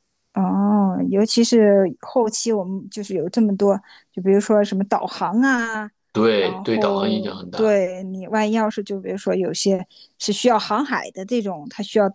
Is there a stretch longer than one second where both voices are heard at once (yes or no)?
yes